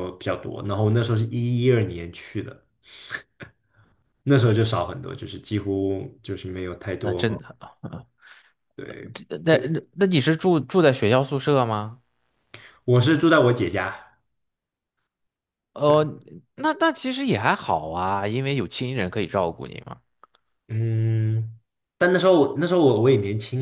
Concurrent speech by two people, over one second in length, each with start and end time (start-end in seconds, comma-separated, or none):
none